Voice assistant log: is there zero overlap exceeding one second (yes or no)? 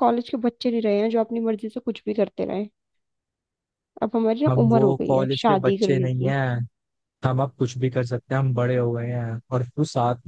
no